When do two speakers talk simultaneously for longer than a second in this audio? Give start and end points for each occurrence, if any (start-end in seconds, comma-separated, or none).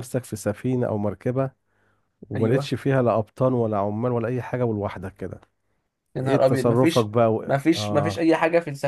6.2-8.3